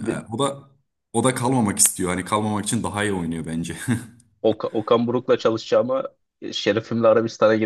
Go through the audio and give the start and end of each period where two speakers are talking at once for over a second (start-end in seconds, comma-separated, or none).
none